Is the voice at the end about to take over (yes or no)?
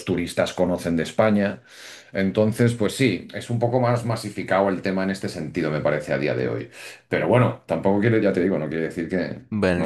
yes